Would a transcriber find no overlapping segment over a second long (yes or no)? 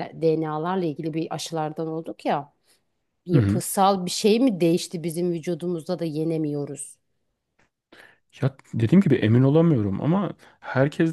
yes